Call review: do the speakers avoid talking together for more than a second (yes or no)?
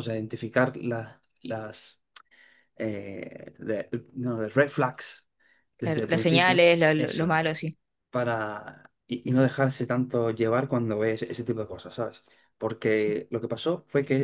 no